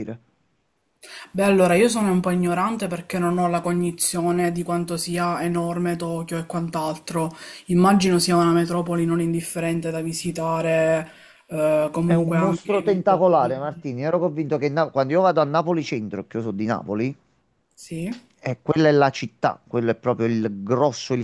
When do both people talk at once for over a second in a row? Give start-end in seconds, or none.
12.0-13.2